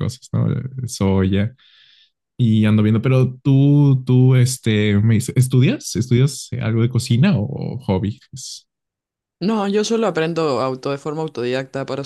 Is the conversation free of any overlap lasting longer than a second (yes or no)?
yes